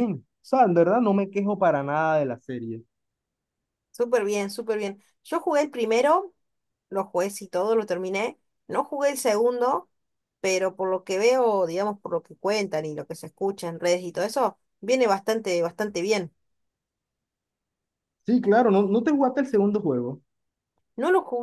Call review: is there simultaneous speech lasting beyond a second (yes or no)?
no